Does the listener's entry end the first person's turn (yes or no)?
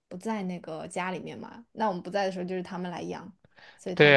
yes